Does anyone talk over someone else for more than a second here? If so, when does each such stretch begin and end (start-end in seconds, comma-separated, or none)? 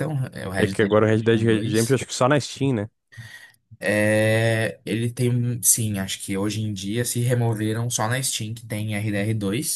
0.6-2.0